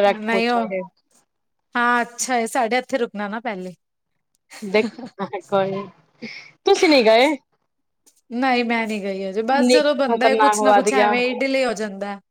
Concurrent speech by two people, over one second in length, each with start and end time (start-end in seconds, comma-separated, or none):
9.4-11.1